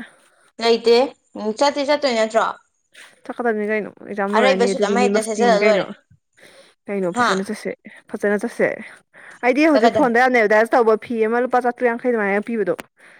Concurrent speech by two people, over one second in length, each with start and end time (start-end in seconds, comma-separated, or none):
4.4-5.8